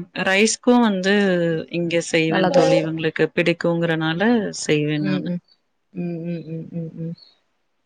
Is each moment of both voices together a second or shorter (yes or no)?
yes